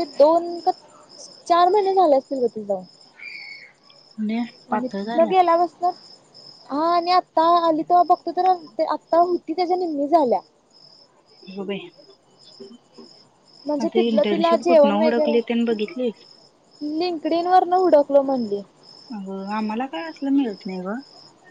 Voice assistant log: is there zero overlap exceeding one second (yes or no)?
no